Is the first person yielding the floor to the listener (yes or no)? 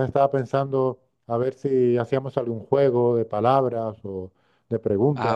yes